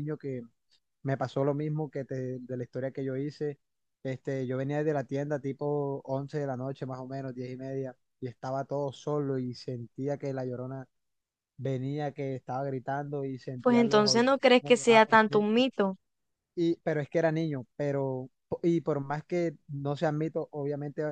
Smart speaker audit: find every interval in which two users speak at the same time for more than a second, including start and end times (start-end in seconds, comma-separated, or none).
13.6-15.6